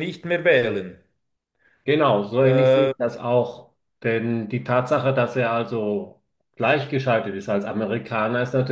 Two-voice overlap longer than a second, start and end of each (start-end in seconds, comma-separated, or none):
none